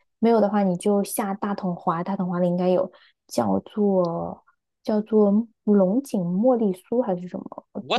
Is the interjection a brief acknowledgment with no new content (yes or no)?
no